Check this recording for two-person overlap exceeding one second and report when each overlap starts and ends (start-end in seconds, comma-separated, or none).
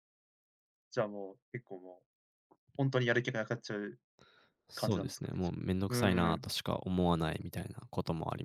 4.8-6.4